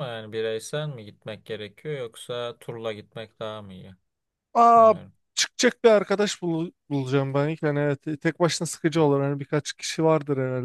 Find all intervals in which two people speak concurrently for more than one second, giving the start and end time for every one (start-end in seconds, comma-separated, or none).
none